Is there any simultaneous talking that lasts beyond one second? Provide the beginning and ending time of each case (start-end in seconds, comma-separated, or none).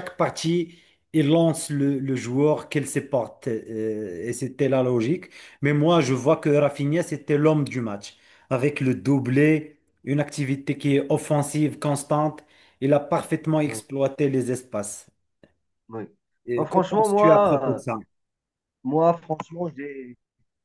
16.6-17.8